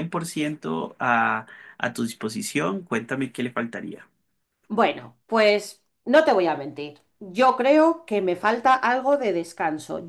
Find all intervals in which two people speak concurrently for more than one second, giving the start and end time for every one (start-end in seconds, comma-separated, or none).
none